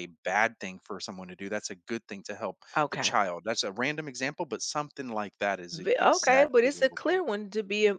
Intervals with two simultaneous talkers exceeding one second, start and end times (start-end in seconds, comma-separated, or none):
5.7-7.2